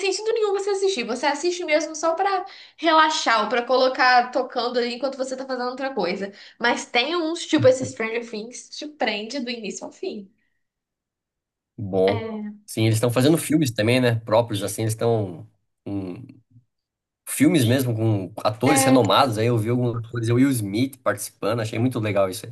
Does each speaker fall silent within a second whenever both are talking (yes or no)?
yes